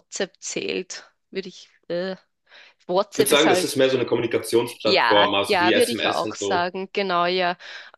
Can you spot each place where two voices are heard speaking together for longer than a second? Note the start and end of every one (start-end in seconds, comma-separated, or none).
4.8-6.7